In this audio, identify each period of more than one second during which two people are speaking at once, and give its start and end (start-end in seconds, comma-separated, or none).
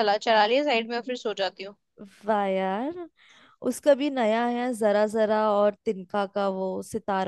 none